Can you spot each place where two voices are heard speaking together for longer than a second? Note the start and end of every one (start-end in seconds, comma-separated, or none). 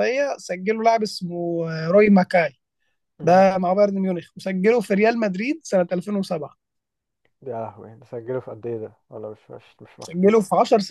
none